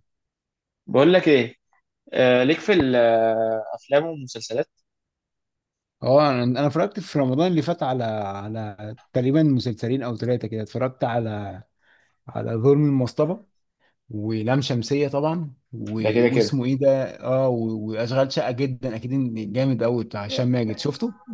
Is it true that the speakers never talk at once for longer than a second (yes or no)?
yes